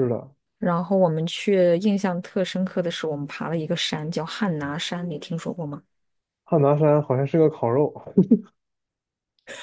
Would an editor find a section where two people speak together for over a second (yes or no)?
no